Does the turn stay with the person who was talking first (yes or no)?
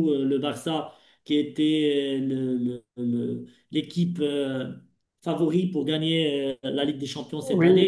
no